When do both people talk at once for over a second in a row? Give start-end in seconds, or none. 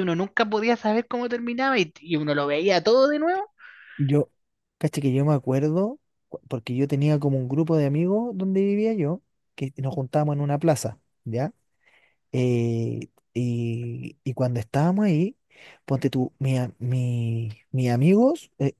none